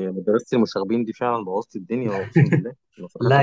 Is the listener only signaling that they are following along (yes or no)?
no